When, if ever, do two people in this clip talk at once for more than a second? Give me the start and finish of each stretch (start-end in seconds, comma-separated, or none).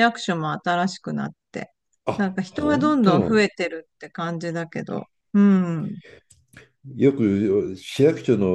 2.2-3.5